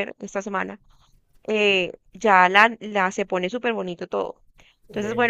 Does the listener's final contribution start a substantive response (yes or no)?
no